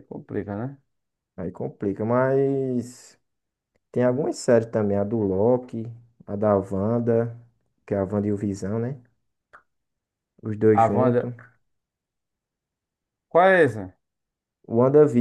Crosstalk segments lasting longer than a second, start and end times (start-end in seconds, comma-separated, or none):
none